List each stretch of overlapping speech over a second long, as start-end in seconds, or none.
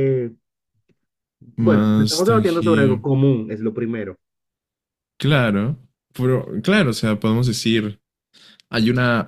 1.6-3.0